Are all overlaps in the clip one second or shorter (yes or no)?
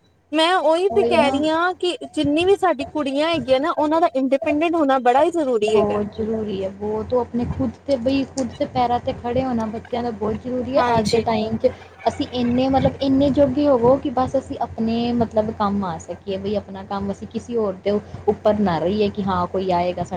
yes